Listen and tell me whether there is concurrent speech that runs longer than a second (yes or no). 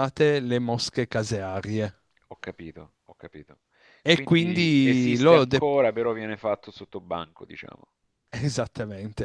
yes